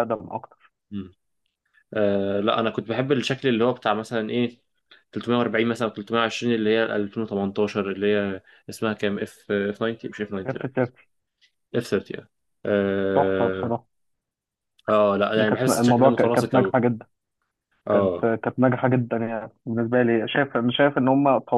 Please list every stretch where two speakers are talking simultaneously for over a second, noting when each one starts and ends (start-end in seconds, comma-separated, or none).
15.4-16.7